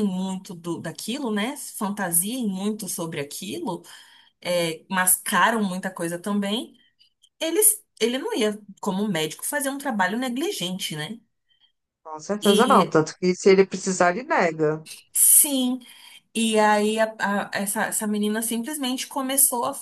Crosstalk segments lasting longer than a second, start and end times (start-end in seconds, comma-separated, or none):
none